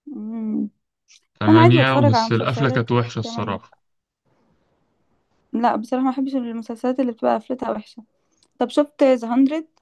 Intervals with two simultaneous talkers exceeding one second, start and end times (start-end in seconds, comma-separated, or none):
1.5-3.6